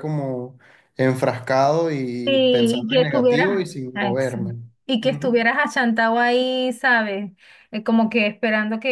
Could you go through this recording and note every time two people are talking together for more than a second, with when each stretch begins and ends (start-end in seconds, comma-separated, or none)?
2.2-4.4